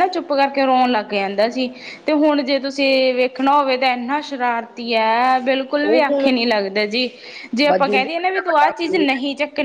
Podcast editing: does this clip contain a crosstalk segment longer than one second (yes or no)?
yes